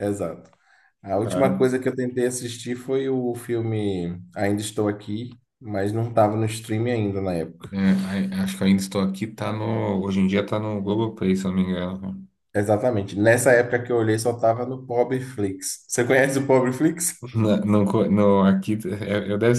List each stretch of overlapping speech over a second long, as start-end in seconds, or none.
none